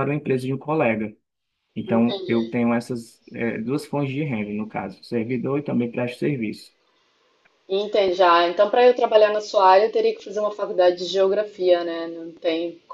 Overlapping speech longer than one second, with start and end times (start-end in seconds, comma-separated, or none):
none